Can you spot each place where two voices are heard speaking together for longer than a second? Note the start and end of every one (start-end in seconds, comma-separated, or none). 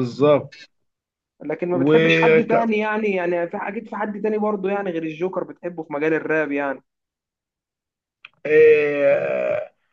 none